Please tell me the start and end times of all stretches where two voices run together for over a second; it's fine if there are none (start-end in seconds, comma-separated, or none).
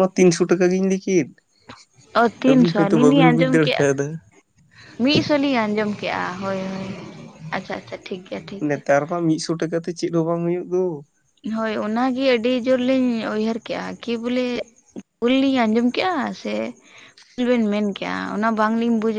2.4-3.9